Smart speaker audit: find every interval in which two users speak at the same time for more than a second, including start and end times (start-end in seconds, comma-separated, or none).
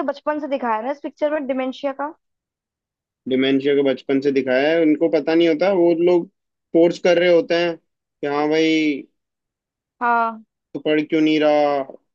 none